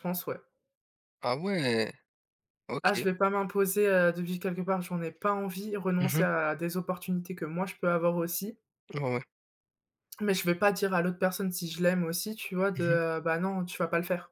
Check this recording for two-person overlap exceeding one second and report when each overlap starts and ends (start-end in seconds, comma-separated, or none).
none